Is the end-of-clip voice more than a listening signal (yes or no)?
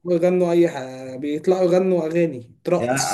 yes